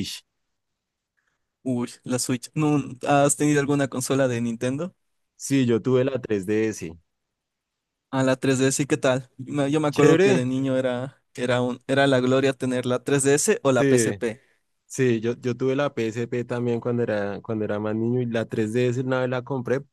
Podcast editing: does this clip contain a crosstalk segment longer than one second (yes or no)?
no